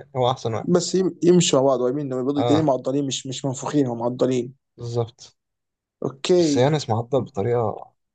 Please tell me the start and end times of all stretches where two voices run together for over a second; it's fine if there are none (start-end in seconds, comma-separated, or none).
none